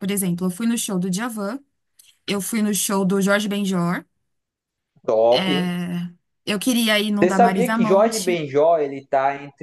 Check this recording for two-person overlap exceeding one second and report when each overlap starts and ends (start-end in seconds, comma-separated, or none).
7.2-8.4